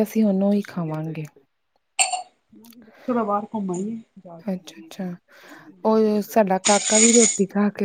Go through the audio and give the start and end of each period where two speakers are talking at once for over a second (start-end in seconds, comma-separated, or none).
none